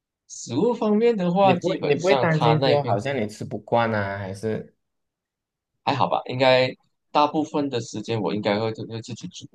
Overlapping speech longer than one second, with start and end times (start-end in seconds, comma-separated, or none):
1.4-3.0